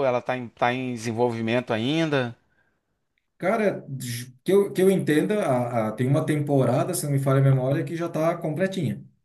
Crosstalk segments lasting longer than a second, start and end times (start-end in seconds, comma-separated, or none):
none